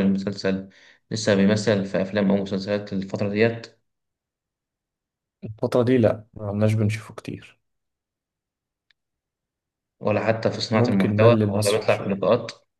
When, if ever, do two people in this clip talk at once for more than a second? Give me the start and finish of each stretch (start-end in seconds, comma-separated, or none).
10.7-12.2